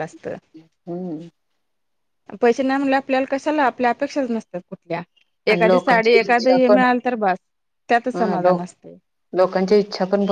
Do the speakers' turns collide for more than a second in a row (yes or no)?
yes